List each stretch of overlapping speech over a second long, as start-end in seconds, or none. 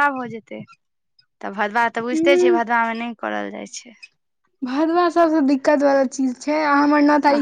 none